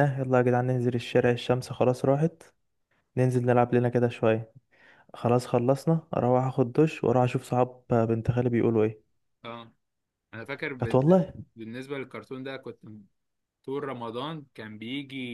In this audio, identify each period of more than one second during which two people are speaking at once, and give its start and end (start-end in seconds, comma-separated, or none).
none